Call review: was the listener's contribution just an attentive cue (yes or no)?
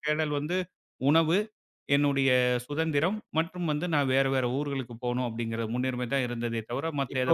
no